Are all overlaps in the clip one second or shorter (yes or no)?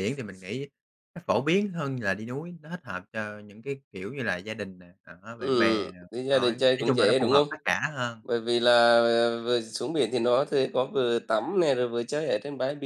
no